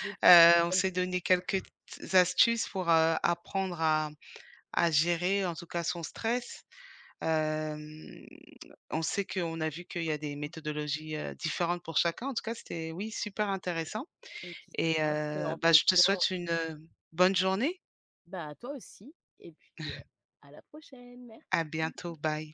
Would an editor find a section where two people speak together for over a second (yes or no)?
yes